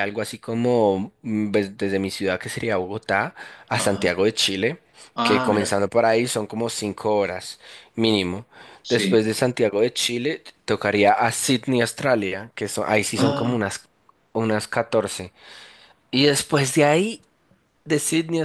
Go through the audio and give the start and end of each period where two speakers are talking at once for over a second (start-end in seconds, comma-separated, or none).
none